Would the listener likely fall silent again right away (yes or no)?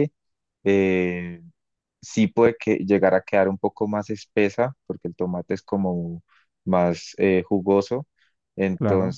yes